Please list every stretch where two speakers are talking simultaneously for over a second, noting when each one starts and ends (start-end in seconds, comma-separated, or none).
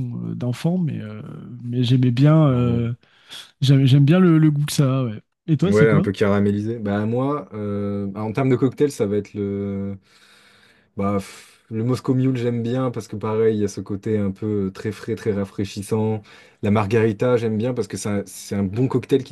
none